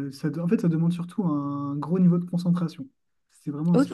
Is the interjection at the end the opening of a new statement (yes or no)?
no